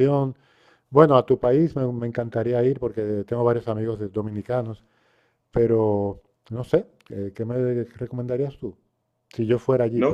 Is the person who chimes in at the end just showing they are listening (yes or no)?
no